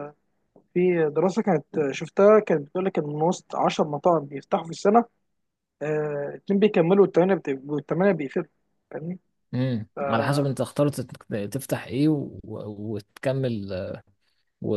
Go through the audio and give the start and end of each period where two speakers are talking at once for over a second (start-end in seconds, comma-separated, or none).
none